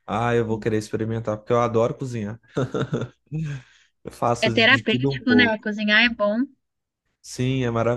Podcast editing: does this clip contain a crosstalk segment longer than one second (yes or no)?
yes